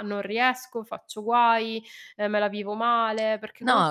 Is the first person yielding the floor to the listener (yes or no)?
yes